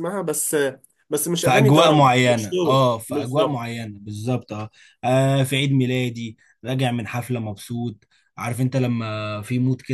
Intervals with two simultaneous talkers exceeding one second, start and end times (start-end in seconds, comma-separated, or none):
1.4-3.6